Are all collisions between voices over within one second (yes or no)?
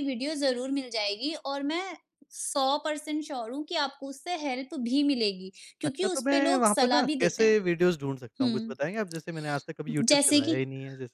no